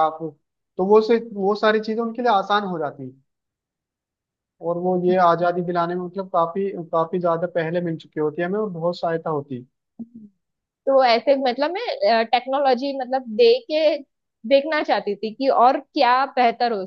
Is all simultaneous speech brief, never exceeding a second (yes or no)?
yes